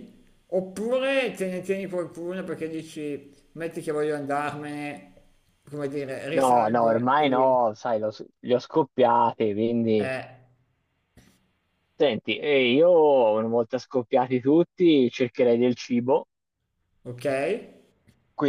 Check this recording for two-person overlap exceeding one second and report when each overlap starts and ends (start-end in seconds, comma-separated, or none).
6.3-7.5